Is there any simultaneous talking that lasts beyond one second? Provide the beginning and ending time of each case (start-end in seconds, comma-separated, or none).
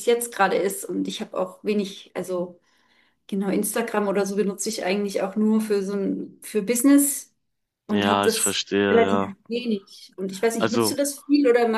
7.9-9.3